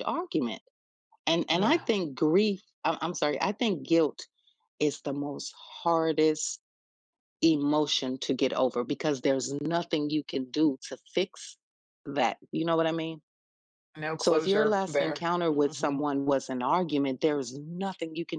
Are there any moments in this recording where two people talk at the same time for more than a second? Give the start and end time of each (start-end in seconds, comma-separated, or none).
14.2-16.1